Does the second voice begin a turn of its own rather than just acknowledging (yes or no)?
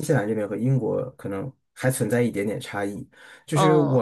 no